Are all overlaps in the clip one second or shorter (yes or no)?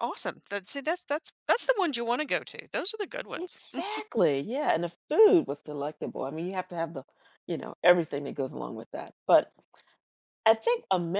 yes